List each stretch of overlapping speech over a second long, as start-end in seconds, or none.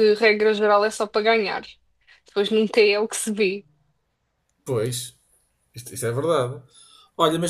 none